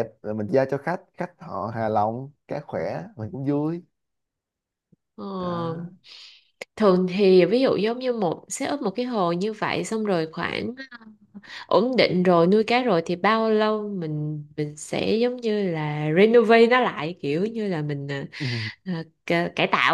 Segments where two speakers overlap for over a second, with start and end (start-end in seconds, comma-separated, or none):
none